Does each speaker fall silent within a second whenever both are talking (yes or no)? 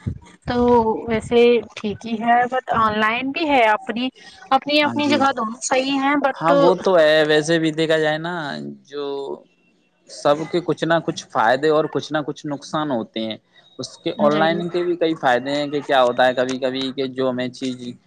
yes